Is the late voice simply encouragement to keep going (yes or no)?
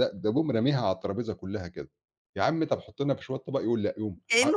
no